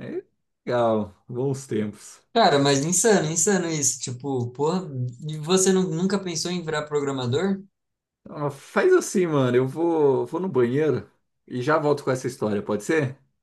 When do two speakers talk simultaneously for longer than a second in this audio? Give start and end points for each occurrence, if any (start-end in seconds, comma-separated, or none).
none